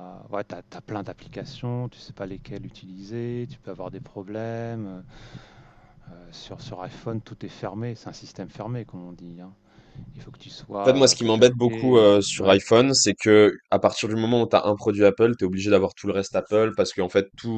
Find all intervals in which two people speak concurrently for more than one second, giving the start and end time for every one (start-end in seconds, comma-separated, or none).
10.8-12.6